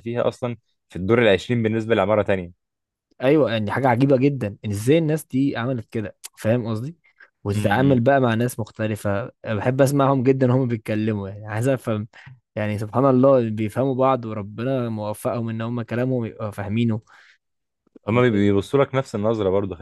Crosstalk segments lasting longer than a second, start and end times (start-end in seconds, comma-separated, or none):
none